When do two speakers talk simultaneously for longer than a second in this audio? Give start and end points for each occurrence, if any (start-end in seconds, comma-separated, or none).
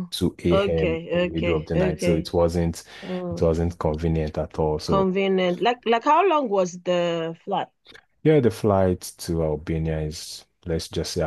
0.5-2.3